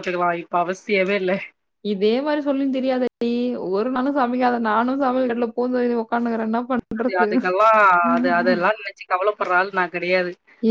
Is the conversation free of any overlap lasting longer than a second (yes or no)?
yes